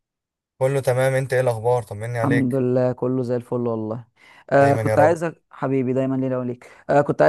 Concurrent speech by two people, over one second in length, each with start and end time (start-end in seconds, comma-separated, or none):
none